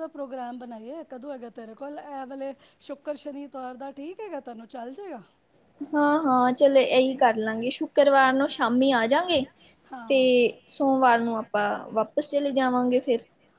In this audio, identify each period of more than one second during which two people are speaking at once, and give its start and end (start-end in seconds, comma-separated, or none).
none